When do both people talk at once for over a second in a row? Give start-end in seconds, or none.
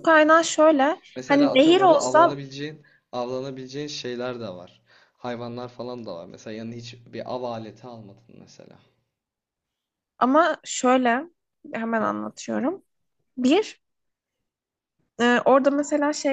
1.2-2.4